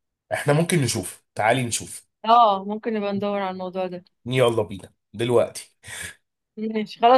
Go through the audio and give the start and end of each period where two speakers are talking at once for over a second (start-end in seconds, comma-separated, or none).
none